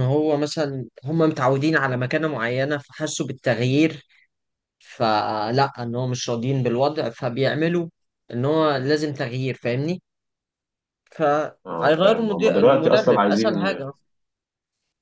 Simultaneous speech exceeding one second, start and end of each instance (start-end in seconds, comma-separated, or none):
11.7-13.7